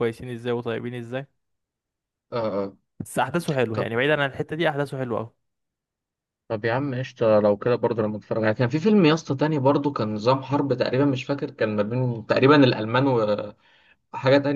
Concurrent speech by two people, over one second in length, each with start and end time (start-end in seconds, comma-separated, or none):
none